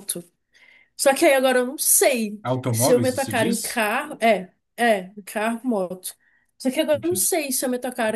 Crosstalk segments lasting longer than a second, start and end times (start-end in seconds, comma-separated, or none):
2.4-3.9